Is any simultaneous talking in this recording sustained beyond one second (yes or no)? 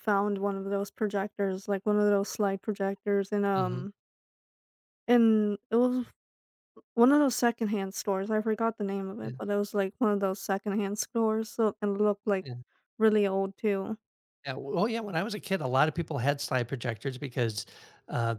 no